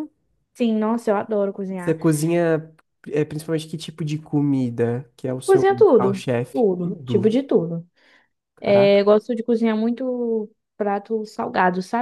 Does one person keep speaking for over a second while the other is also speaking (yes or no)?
yes